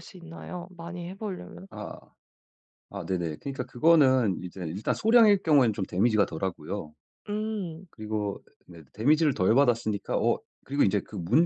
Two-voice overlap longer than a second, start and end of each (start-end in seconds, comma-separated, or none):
none